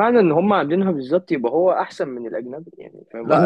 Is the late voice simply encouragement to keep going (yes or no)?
no